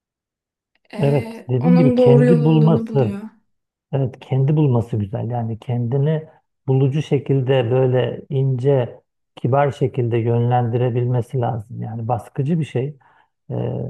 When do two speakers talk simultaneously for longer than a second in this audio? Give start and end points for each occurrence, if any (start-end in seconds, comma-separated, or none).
1.0-3.2